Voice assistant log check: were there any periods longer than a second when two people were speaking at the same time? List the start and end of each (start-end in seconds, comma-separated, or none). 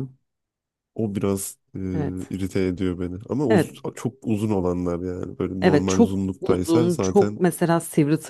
5.6-7.4